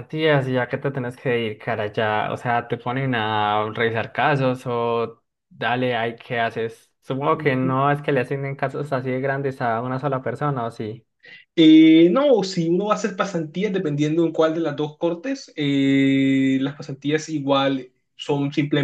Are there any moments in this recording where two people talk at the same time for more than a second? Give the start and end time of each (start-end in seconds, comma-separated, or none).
none